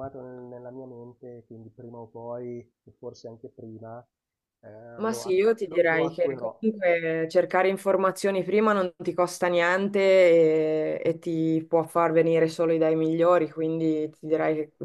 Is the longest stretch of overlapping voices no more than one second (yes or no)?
no